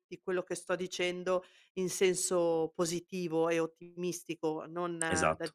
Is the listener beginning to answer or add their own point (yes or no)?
no